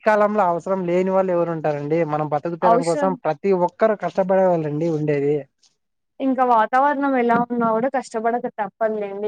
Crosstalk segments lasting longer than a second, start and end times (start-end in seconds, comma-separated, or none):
none